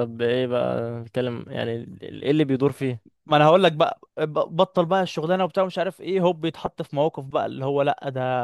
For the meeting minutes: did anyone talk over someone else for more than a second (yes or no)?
no